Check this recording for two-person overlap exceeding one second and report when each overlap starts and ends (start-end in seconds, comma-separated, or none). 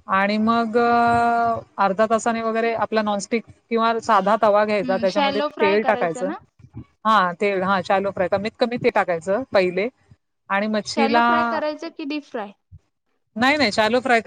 4.7-6.3